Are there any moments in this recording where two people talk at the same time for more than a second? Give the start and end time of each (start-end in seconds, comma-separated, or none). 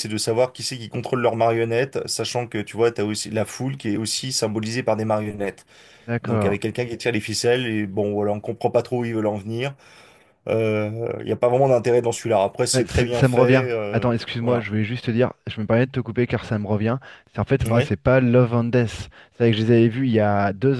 12.7-14.7